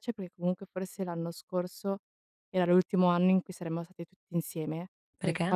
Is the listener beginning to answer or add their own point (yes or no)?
no